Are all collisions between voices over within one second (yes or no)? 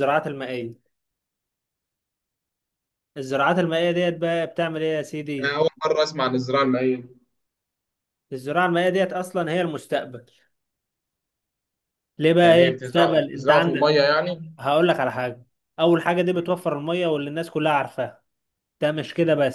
no